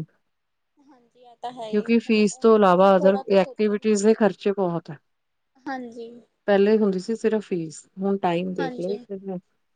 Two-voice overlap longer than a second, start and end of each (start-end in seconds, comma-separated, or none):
1.7-4.3